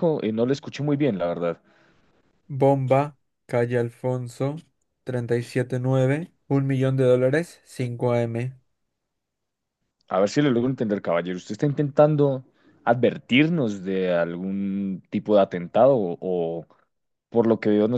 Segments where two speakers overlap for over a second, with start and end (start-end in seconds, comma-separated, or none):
none